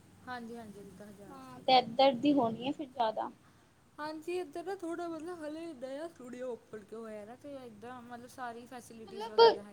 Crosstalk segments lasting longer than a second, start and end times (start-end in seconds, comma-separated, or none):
none